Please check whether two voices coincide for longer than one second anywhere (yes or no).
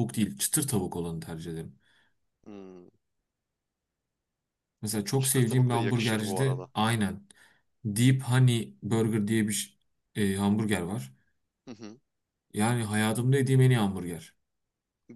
yes